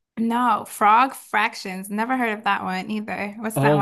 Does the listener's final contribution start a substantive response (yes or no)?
yes